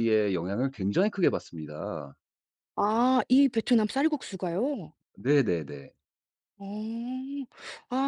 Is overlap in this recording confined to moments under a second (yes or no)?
yes